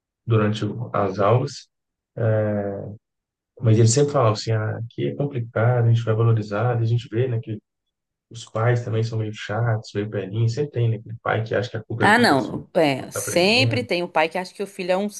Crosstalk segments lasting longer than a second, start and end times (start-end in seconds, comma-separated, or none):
12.0-13.9